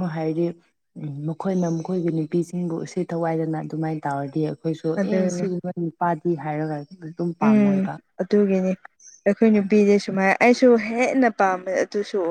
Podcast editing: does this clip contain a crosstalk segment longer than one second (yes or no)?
no